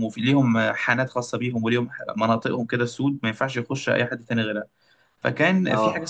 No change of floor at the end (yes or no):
yes